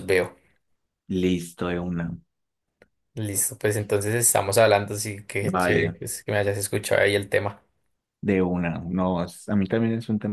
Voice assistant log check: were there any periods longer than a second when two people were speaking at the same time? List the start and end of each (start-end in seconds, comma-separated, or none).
none